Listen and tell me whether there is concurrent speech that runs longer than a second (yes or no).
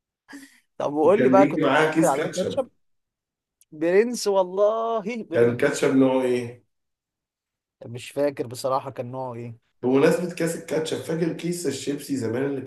yes